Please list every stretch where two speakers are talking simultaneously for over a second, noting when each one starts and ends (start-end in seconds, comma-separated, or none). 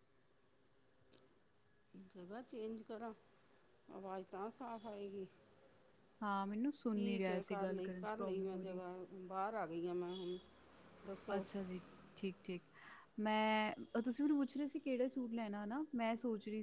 6.9-8.8